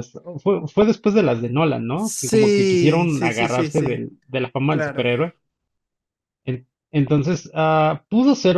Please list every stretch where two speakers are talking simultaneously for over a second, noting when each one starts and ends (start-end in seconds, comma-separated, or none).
1.9-4.0